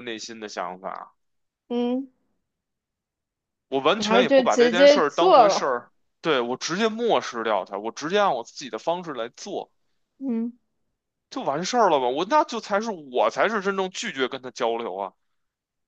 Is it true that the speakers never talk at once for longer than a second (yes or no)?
no